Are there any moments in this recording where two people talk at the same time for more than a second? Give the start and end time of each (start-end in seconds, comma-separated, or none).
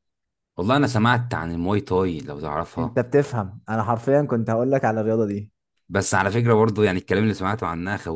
none